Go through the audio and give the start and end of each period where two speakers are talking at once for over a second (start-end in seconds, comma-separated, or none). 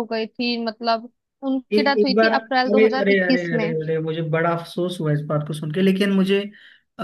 1.7-3.7